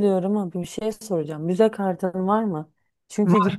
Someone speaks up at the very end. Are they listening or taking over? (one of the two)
listening